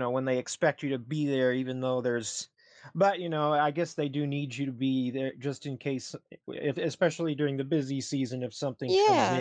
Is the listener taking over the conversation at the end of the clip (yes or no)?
yes